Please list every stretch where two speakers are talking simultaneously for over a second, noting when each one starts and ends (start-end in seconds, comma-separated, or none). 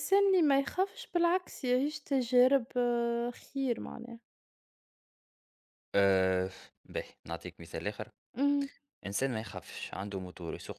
none